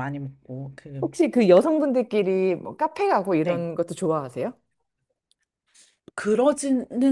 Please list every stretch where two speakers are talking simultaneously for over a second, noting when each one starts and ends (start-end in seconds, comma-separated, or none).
none